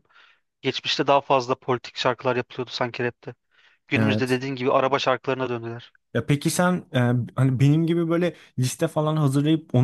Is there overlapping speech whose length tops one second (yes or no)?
no